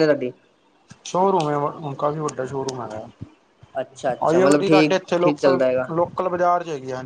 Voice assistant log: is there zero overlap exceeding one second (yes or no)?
no